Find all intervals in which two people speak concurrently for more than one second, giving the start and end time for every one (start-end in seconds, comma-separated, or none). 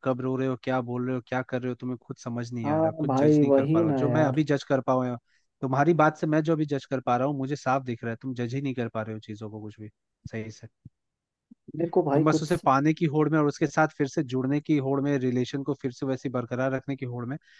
2.6-4.5